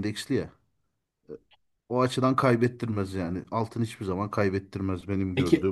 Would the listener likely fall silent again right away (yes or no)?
no